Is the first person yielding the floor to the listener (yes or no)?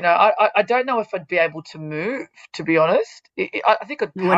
yes